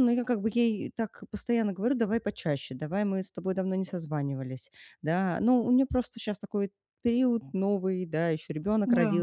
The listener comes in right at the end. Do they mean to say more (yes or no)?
no